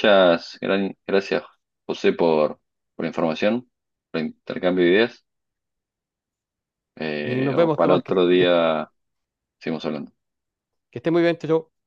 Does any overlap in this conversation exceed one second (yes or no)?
yes